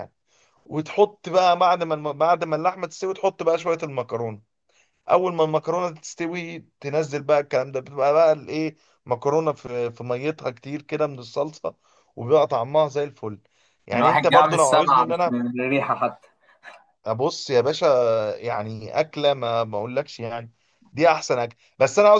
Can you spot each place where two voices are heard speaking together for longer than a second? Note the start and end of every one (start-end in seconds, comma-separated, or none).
13.9-15.4